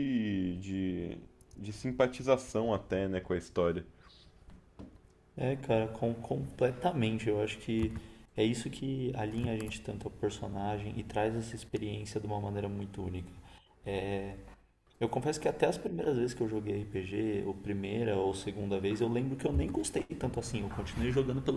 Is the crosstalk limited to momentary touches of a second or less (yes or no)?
yes